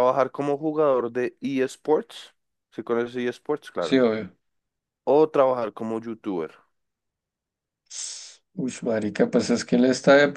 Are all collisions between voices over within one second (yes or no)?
yes